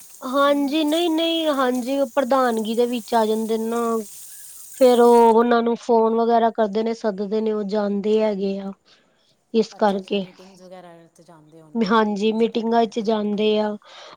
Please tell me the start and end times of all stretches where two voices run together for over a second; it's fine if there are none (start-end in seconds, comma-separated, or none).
11.9-13.5